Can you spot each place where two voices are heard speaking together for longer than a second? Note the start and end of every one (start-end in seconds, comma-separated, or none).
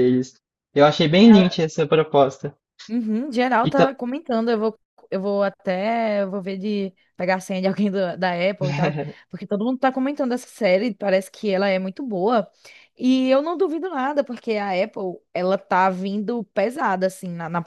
none